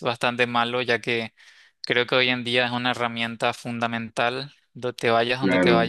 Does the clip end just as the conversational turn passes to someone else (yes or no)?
yes